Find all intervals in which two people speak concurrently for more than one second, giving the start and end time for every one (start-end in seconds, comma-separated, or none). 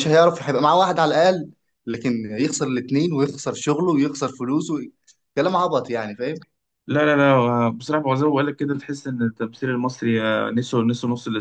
none